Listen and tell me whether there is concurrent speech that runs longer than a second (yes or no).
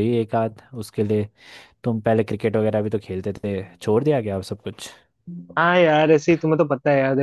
no